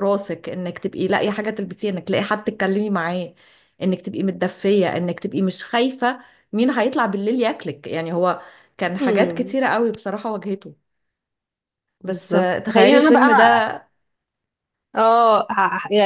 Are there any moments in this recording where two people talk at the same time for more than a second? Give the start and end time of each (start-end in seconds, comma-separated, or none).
12.0-13.4